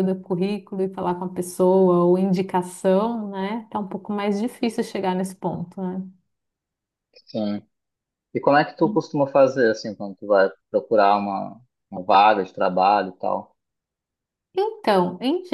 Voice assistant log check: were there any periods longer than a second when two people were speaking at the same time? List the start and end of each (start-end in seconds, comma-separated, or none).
none